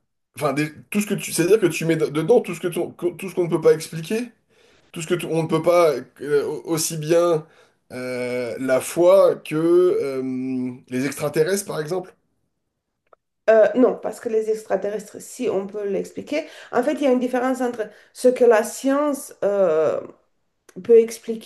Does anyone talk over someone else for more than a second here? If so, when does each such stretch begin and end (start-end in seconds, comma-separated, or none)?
none